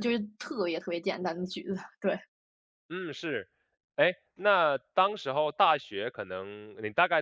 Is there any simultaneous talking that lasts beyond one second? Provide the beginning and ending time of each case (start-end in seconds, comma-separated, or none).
none